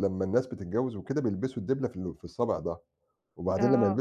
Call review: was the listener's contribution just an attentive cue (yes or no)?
yes